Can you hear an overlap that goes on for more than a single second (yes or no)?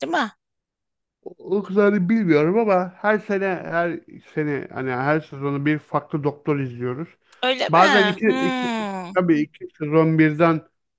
yes